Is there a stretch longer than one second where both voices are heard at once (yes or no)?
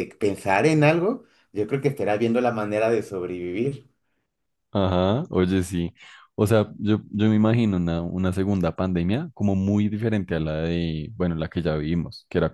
no